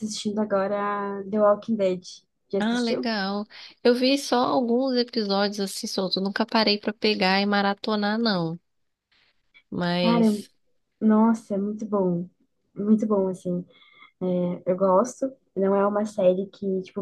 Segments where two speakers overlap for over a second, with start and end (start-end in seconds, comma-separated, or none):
none